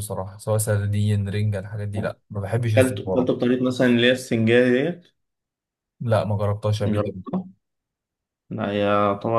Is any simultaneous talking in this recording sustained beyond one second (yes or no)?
no